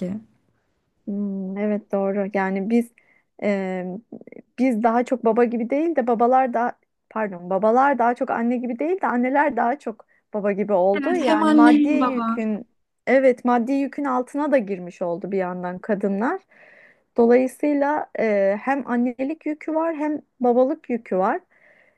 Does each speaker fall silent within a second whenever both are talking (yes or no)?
no